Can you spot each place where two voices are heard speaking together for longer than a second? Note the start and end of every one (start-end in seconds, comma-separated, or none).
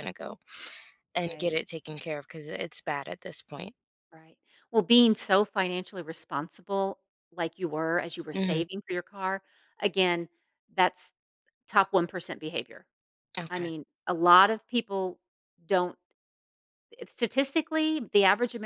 none